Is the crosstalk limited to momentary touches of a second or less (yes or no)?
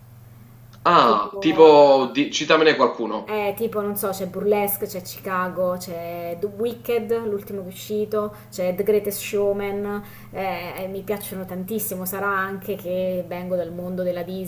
yes